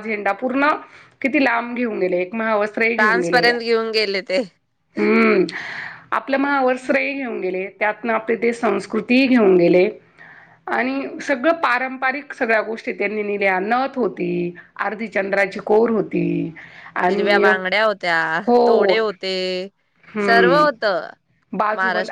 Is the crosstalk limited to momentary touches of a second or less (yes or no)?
yes